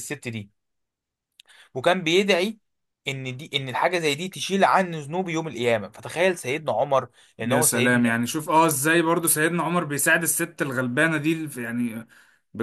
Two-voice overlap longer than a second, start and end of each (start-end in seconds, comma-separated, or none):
none